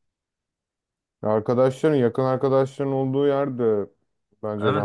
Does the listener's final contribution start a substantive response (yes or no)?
yes